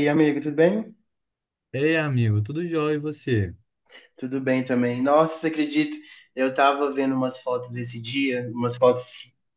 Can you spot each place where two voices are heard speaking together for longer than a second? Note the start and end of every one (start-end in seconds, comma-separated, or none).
none